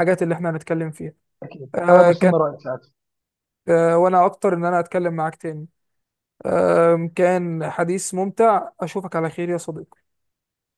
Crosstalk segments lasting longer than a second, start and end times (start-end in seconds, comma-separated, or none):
none